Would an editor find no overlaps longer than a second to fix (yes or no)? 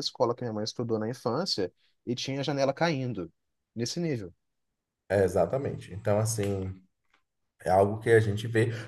yes